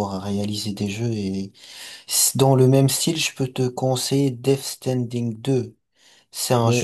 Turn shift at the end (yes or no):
yes